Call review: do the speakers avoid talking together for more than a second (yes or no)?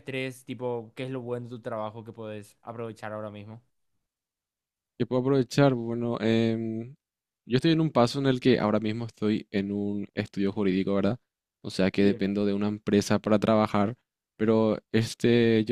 yes